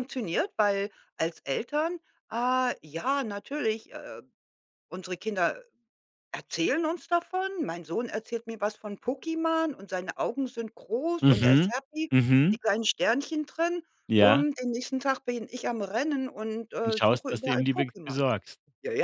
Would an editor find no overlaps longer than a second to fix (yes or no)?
no